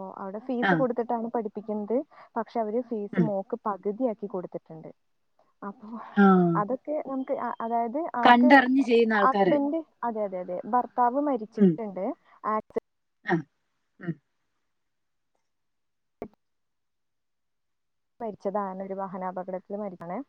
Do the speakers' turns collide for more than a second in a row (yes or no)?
no